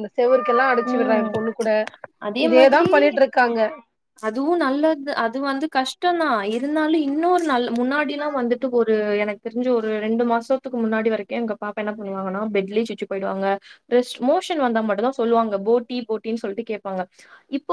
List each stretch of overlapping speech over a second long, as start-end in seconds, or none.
none